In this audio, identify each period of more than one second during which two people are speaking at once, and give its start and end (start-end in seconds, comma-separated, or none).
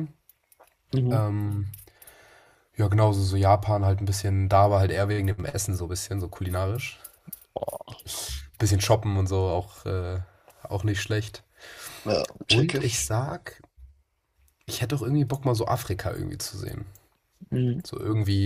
none